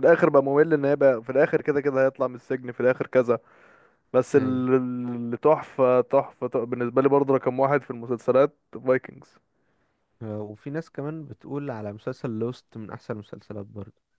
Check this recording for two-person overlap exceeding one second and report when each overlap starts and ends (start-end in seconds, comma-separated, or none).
none